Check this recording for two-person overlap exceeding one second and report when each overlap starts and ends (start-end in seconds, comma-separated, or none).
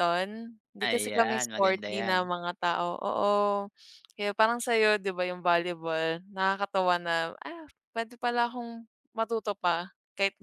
0.8-2.3